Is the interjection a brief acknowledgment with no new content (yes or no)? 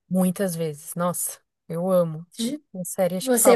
no